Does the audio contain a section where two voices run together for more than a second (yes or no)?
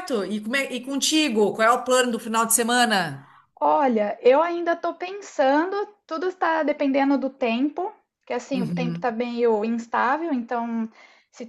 no